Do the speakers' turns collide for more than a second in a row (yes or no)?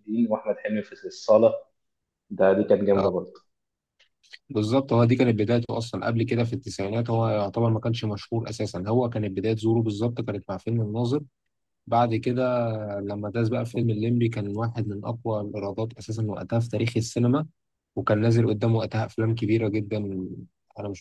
no